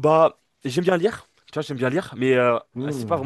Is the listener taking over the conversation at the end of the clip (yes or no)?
no